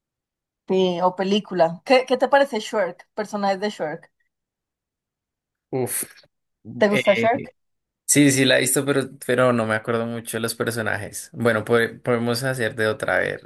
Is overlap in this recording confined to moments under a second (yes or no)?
yes